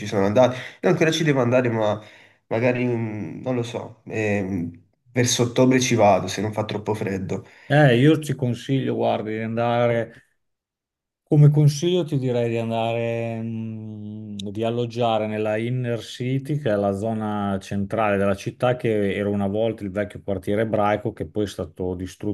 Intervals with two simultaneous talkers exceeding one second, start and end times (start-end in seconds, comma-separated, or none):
none